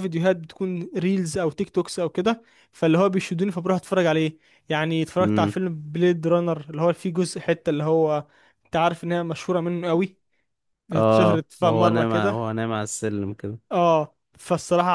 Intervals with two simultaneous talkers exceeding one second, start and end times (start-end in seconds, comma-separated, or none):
10.9-12.3